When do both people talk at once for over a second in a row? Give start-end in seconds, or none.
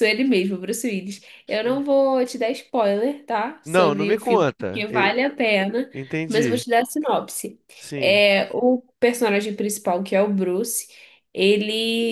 3.6-5.1